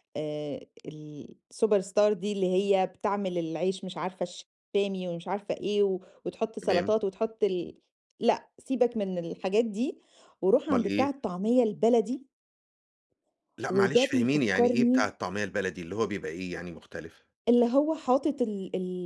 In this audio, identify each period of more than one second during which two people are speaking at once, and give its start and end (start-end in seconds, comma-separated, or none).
13.7-15.1